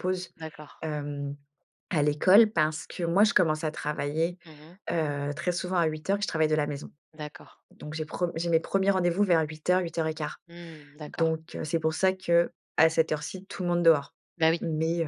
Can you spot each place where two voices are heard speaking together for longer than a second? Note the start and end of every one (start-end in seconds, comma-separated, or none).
none